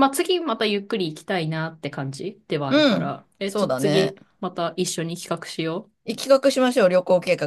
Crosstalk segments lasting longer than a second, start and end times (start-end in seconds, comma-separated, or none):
2.7-4.2